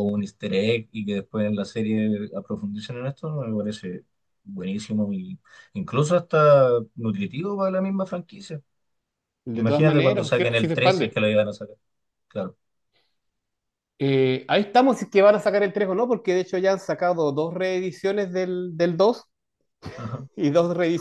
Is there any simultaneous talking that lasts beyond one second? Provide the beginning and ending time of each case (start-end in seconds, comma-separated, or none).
9.6-11.2